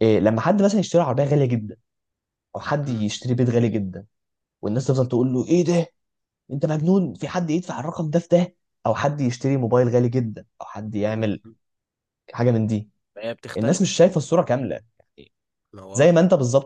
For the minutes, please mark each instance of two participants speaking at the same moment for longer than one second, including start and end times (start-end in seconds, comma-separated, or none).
none